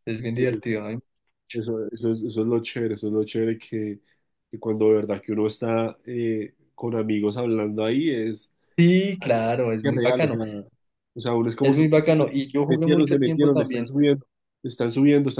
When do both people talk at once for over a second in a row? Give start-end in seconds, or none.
12.7-13.9